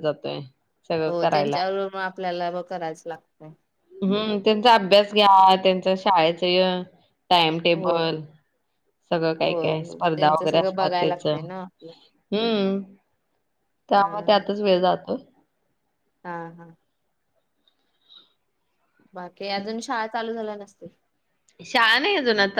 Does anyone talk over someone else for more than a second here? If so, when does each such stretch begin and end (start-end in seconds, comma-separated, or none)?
9.5-11.3